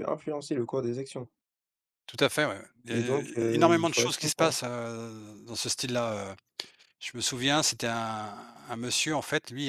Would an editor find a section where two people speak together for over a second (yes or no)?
yes